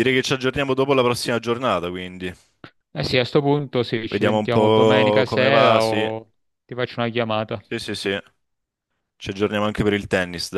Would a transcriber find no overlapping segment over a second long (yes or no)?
no